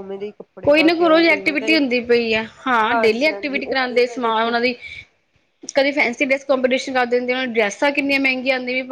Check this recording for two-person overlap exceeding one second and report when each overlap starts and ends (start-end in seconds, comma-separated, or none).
2.9-4.5